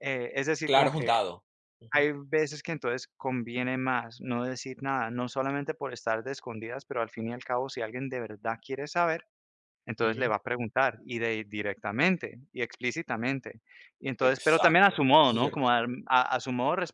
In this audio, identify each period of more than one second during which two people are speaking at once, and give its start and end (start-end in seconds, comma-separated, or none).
14.2-15.7